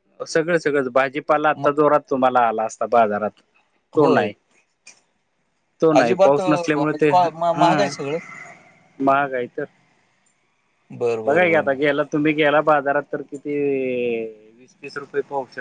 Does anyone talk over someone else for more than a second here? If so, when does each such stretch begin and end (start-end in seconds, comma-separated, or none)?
6.0-7.9